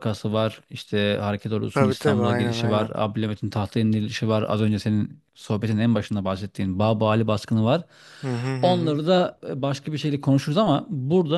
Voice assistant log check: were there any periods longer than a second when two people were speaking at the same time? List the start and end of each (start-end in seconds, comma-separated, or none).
1.7-2.9